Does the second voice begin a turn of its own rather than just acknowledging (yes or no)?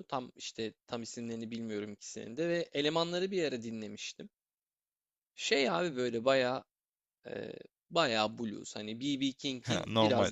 no